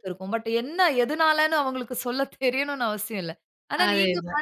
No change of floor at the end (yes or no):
yes